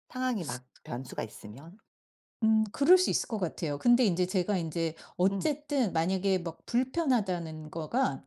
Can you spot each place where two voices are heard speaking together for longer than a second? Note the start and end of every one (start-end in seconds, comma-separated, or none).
none